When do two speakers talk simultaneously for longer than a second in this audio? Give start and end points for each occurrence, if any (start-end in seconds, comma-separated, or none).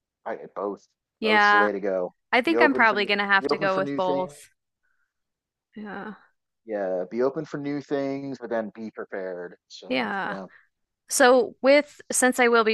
2.3-4.3